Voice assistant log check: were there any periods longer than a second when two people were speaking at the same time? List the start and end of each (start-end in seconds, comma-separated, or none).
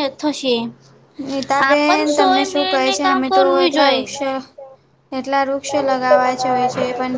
1.7-4.1